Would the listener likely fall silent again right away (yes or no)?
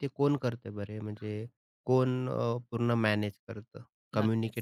no